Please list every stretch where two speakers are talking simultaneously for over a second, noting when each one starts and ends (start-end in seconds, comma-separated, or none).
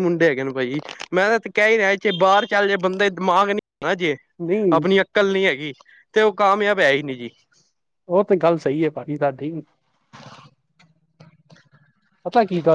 none